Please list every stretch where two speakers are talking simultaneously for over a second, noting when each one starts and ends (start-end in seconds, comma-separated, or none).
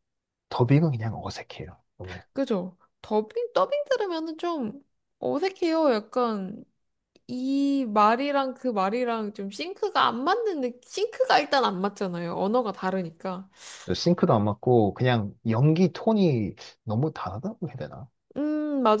none